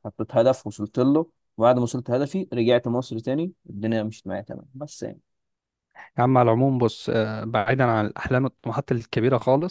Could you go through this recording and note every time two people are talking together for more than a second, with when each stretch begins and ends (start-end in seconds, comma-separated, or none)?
none